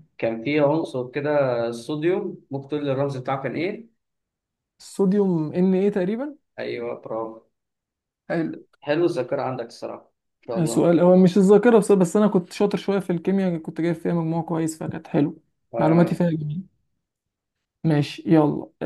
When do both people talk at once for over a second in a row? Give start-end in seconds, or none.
none